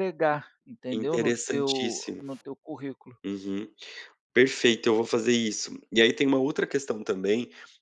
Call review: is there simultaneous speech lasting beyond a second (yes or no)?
yes